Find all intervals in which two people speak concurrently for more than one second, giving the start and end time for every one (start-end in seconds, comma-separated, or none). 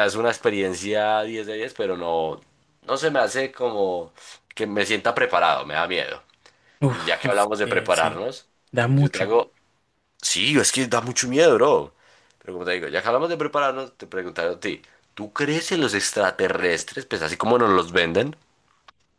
6.9-8.2